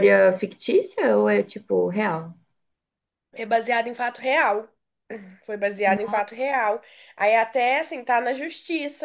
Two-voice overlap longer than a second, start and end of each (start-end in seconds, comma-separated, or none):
none